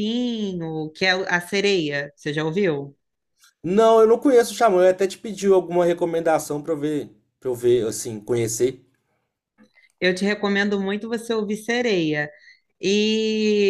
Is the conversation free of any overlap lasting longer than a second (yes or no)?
yes